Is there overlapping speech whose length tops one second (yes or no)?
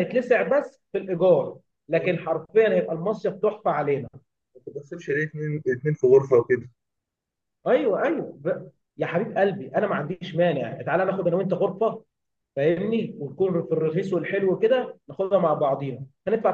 no